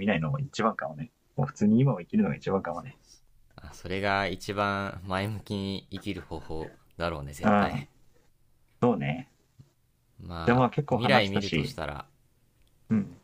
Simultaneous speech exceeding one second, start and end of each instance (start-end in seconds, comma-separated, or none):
10.4-11.8